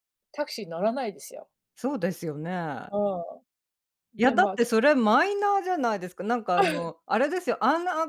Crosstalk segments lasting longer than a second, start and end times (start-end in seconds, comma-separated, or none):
none